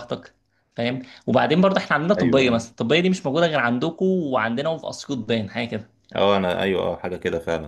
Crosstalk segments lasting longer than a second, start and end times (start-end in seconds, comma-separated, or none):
none